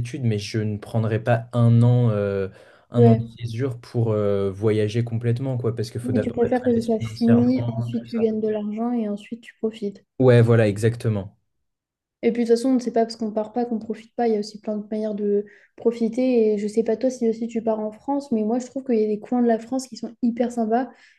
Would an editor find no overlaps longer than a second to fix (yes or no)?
no